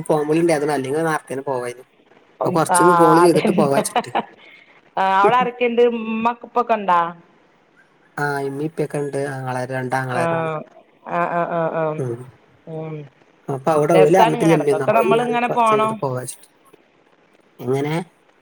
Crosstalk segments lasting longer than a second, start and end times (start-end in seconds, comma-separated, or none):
13.9-15.9